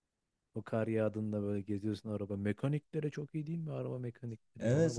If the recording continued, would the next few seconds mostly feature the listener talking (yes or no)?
yes